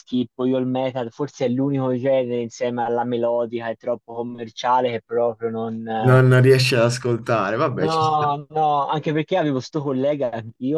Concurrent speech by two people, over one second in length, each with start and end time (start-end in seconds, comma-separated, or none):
none